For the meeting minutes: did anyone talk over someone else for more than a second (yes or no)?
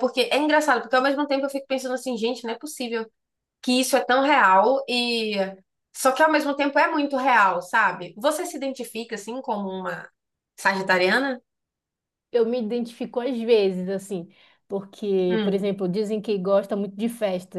no